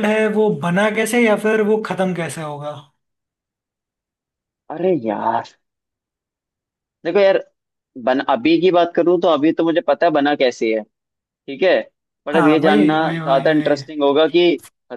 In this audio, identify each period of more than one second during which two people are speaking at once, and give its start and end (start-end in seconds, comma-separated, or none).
12.3-13.8